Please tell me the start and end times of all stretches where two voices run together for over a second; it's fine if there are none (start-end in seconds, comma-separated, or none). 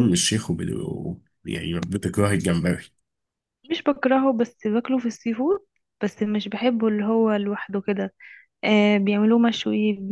none